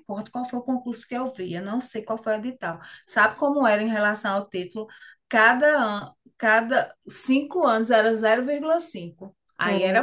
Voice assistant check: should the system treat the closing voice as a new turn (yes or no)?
yes